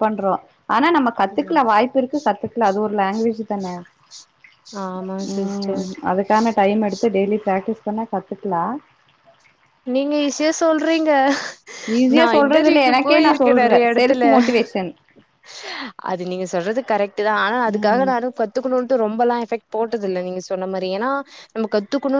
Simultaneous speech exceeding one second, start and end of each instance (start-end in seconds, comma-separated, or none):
12.2-14.2